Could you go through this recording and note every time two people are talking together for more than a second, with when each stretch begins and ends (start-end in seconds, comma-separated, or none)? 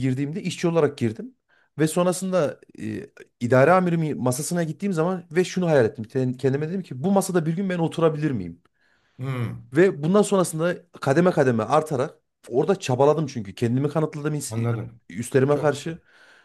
none